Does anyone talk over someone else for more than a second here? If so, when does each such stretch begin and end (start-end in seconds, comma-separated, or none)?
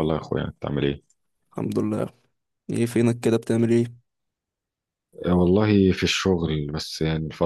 none